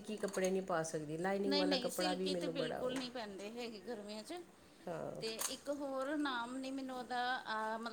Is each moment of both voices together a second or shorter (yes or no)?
no